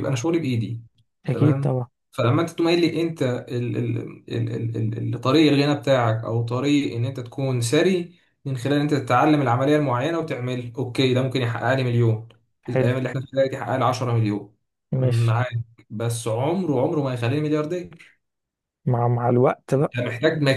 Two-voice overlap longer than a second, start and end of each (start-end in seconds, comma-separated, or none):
none